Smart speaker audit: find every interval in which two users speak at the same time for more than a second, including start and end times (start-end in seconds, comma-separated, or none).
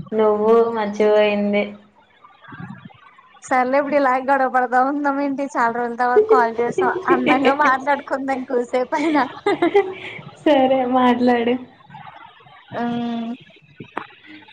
none